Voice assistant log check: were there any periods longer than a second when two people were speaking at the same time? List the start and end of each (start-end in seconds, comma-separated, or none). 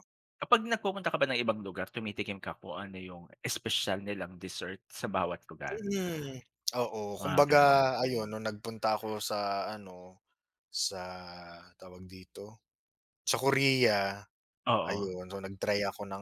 none